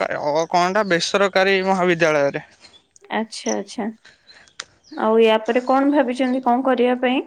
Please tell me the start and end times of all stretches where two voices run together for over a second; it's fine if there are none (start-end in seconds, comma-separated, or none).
none